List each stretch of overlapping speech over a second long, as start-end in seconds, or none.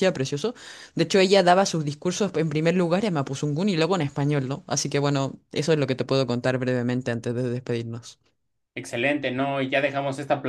none